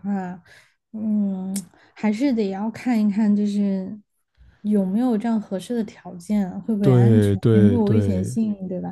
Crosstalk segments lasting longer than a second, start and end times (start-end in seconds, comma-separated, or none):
6.8-8.3